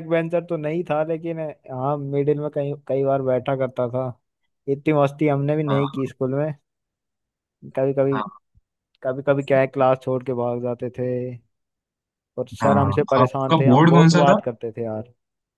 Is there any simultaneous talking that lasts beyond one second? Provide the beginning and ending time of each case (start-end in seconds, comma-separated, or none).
12.6-14.4